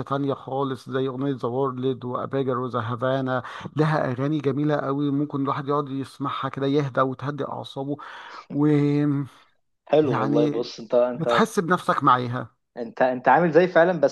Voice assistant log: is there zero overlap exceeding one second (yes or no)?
yes